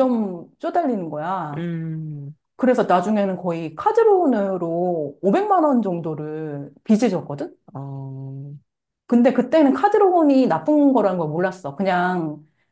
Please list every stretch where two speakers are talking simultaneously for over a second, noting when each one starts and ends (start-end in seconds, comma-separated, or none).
none